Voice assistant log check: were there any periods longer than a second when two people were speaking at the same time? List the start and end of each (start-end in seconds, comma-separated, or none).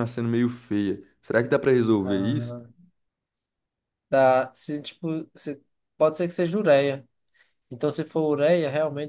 none